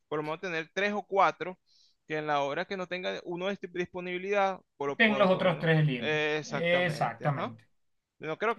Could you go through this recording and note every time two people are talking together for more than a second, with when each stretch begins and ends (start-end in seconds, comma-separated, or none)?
5.0-7.5